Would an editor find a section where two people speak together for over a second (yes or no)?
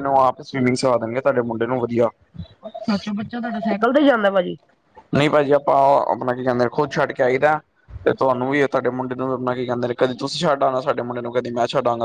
no